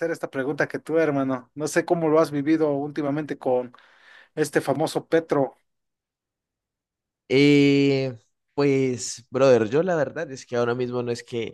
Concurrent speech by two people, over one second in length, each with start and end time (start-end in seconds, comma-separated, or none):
none